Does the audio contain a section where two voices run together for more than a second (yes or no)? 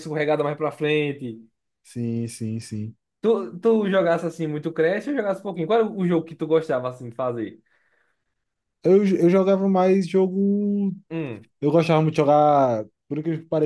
no